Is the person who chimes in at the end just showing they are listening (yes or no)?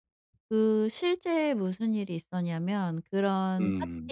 yes